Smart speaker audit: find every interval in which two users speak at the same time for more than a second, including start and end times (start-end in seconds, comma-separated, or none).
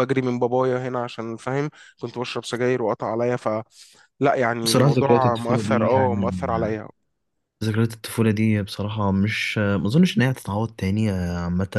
4.6-6.5